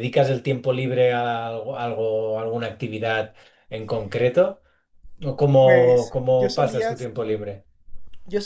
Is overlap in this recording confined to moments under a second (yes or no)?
no